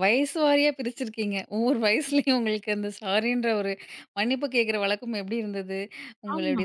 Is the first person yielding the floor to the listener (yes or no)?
no